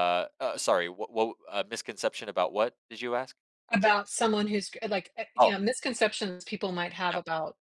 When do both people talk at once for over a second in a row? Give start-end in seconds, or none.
none